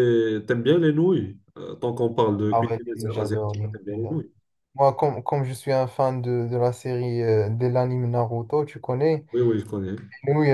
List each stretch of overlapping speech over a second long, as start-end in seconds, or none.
2.5-4.2